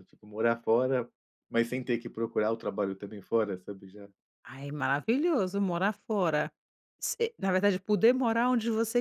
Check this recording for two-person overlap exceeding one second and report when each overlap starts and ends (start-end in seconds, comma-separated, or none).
none